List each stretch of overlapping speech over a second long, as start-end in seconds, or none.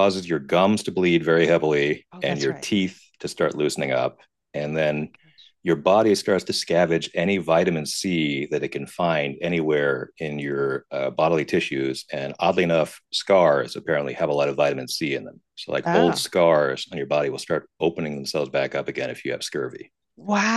none